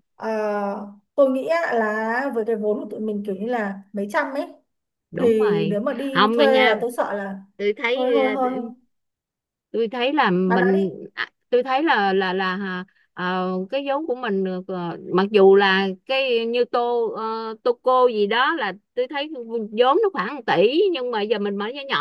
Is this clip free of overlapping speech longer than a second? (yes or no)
no